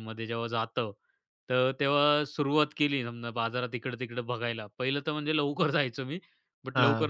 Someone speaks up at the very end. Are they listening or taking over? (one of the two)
listening